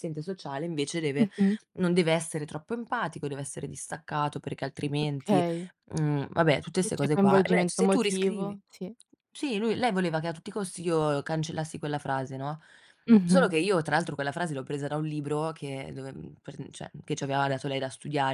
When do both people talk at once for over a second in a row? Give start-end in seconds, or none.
6.8-8.6